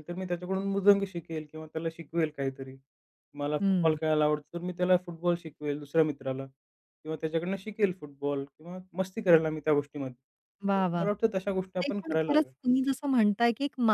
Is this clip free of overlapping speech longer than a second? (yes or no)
no